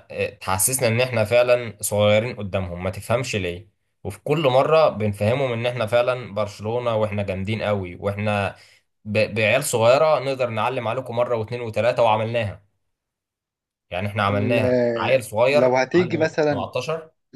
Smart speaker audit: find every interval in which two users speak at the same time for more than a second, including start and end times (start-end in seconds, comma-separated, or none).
14.3-16.7